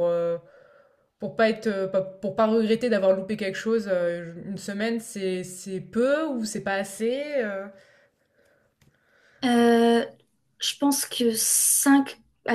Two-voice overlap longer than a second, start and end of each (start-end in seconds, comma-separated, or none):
none